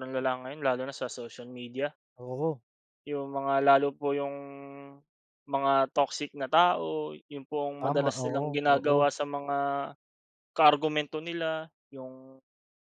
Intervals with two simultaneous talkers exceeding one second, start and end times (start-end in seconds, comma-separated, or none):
7.8-9.1